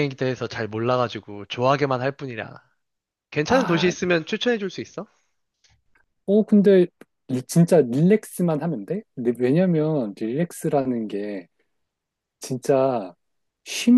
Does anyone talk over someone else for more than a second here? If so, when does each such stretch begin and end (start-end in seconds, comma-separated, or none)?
none